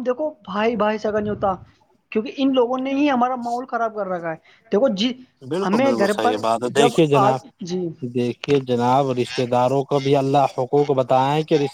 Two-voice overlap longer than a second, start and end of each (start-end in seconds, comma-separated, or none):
none